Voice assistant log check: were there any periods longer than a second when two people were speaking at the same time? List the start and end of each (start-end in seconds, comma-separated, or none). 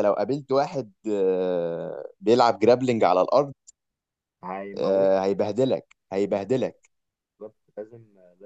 none